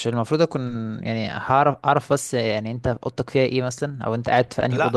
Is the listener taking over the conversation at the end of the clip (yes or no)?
no